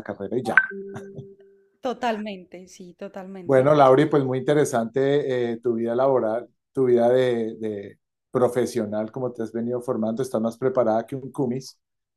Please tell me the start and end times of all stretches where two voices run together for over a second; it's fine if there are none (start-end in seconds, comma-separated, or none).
none